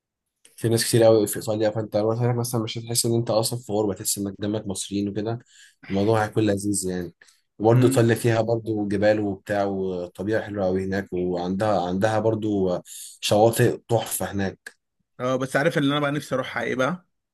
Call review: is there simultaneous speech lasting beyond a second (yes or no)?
no